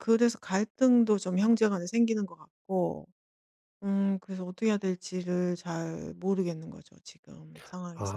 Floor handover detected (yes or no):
yes